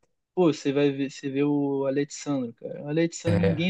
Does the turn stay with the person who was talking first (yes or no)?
yes